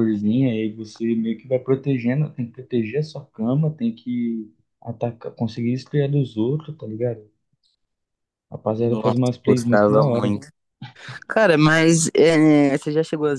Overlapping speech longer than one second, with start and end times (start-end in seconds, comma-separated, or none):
8.8-10.4